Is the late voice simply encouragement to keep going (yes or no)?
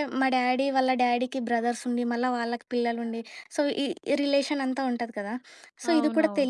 yes